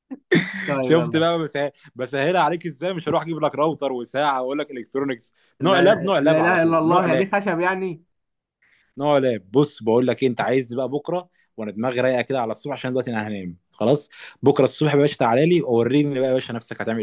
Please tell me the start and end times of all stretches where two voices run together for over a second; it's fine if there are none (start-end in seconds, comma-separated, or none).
5.6-7.2